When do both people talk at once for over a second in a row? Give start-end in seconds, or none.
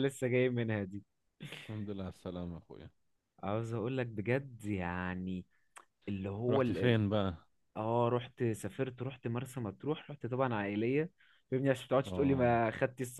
none